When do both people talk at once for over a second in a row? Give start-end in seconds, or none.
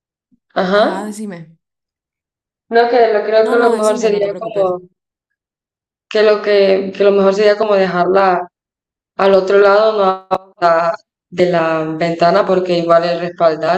3.5-4.7